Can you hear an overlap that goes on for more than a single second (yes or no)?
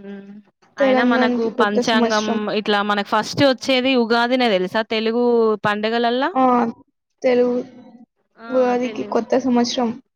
yes